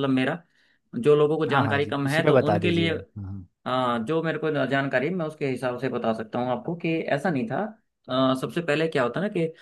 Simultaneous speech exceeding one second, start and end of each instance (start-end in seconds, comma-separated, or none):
1.5-2.9